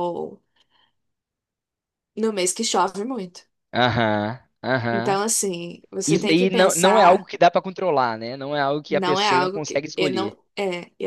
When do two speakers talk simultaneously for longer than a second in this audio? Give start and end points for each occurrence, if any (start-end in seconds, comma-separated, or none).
6.1-7.3, 8.9-10.4